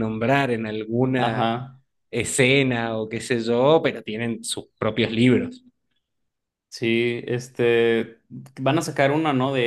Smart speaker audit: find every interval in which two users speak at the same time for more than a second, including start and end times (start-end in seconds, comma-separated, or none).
none